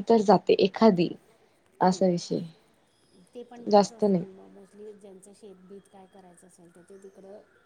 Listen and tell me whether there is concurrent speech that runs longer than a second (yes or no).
no